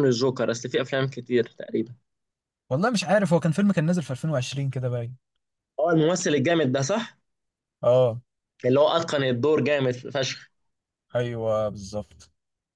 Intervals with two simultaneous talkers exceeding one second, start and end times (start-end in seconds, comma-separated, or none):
none